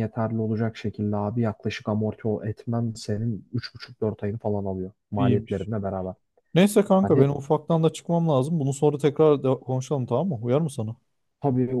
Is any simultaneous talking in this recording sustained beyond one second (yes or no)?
no